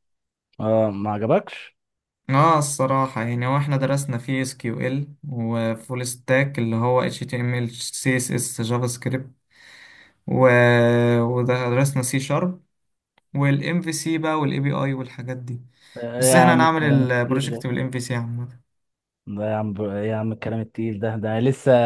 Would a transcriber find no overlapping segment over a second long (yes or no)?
no